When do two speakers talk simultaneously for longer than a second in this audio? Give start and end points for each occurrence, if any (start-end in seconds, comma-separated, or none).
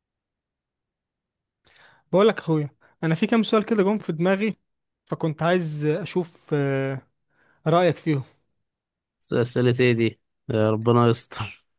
none